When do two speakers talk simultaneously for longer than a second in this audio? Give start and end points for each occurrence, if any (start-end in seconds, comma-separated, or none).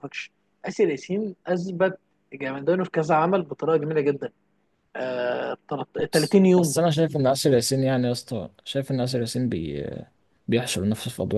none